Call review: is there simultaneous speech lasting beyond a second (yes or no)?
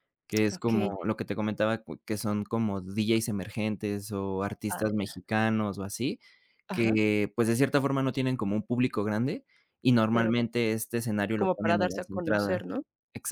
yes